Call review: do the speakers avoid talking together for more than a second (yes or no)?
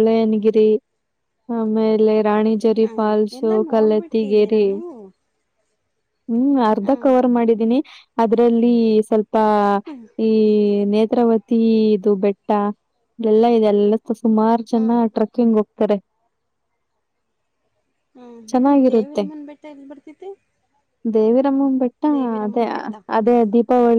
no